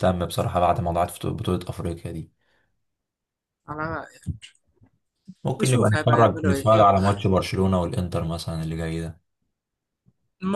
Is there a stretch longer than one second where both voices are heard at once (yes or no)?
yes